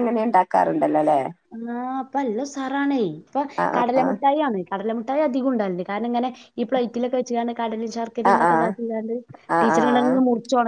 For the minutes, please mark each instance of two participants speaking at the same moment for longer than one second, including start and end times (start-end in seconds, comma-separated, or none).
none